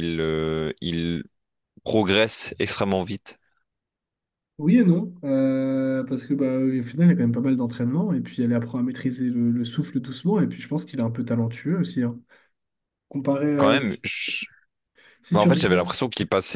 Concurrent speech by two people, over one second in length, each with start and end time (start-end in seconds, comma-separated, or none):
none